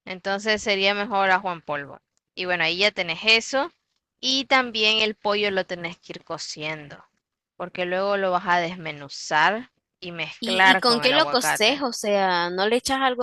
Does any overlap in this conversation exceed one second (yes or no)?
yes